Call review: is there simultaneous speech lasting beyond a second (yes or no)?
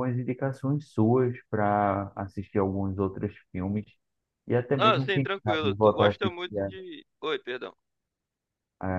yes